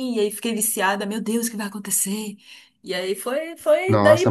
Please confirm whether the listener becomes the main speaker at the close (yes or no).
yes